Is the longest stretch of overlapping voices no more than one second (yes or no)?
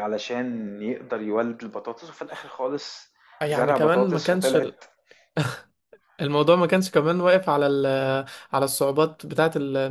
no